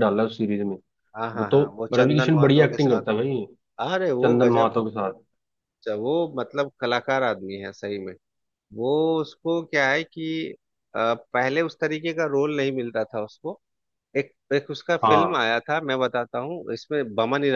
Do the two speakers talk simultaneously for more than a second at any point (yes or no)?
yes